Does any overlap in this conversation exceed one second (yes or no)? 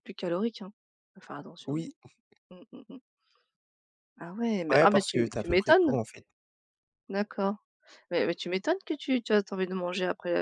yes